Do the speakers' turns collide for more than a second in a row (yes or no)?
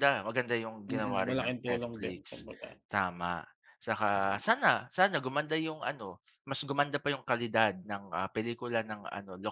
yes